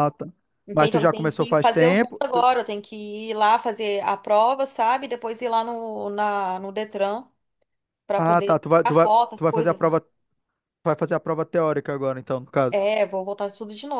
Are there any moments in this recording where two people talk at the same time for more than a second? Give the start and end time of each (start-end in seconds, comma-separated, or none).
0.7-2.5, 8.2-9.9